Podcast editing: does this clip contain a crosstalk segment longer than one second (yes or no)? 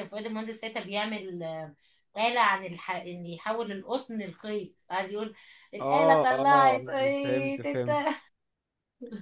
yes